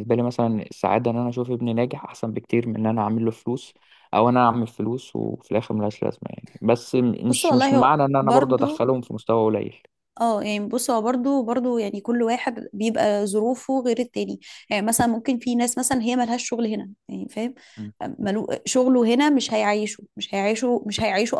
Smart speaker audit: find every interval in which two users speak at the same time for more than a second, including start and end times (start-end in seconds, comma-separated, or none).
7.3-8.8